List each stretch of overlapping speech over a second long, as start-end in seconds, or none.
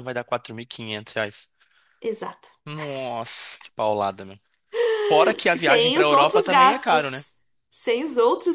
5.5-7.2